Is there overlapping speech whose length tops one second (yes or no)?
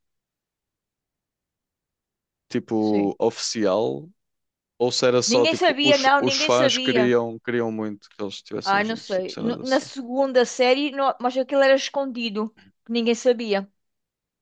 yes